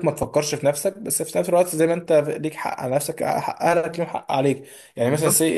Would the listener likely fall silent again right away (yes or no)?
yes